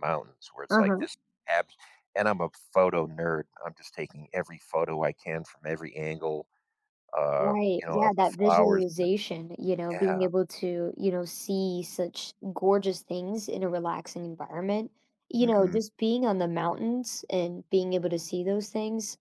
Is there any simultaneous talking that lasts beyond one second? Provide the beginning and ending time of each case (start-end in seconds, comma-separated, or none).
7.4-9.1